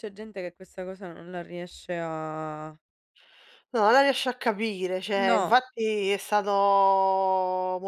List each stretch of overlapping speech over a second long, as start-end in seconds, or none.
none